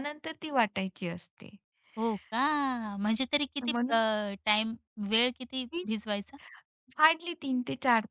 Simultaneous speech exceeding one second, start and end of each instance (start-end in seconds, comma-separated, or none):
none